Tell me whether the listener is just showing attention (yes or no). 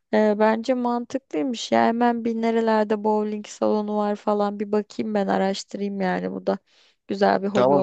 no